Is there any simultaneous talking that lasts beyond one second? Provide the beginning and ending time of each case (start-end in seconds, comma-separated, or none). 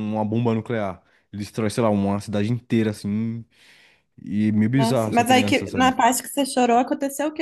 4.8-6.0